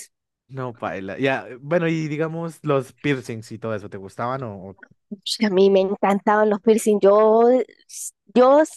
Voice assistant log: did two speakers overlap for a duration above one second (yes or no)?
no